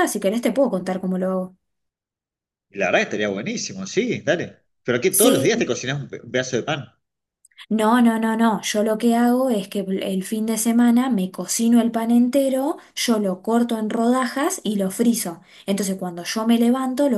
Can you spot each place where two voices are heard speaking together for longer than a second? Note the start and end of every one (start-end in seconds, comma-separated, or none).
none